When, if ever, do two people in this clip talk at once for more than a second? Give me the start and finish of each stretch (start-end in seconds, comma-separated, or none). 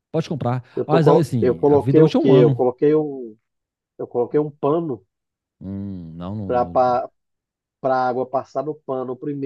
0.7-2.7